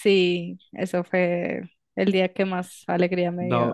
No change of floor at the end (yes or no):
no